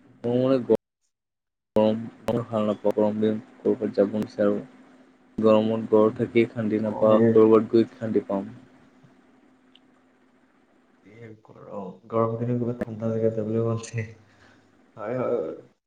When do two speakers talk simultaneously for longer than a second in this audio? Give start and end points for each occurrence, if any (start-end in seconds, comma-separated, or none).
none